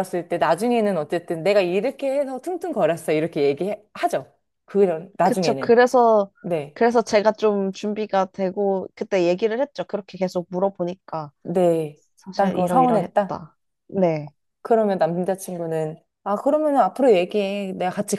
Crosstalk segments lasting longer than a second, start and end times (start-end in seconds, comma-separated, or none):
12.2-13.4